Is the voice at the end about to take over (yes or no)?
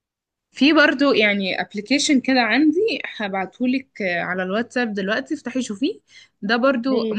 no